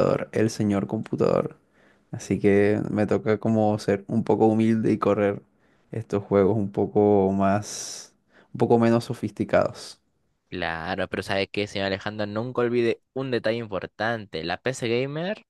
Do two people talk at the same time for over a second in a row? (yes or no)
no